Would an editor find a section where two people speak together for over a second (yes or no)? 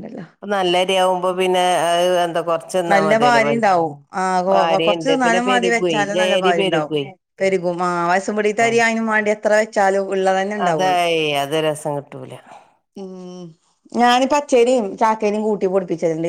yes